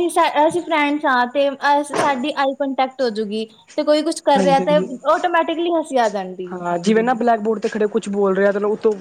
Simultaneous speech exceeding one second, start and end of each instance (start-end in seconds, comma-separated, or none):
none